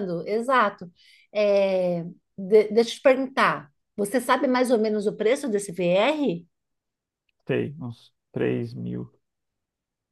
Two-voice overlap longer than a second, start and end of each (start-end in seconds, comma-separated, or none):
none